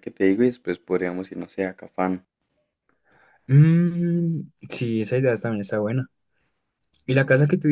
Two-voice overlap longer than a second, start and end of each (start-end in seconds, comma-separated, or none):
none